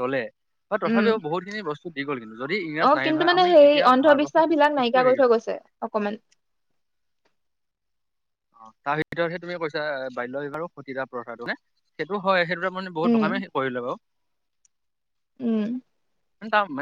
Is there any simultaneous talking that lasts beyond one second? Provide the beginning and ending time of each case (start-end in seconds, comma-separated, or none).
2.9-5.3